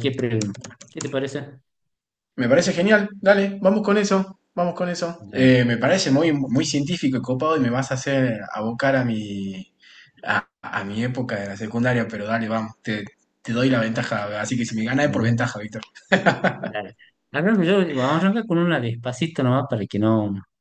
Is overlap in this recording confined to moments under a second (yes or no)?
yes